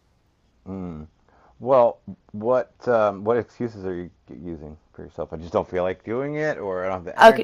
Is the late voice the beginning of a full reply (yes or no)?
yes